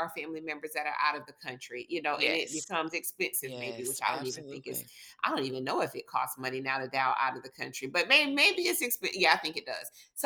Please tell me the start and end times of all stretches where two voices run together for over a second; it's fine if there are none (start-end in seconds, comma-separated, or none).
3.4-4.8